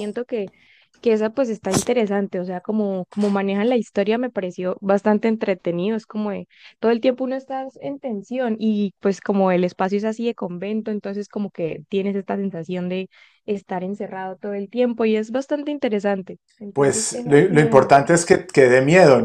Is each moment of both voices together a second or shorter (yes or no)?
no